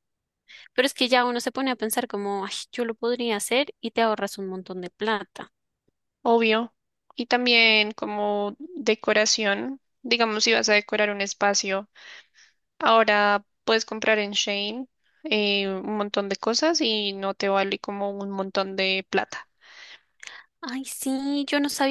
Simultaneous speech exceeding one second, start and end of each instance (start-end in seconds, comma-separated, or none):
none